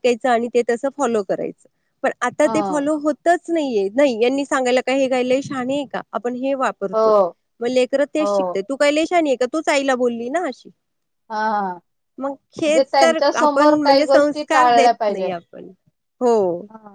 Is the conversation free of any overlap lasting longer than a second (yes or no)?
no